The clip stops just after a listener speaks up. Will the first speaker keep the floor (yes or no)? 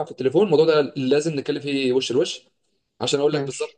yes